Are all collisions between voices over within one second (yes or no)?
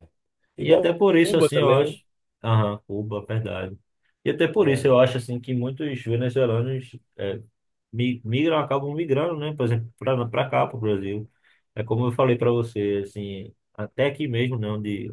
no